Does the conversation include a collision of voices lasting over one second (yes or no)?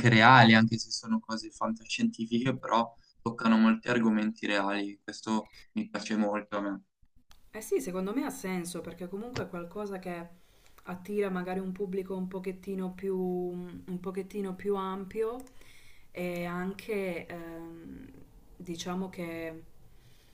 no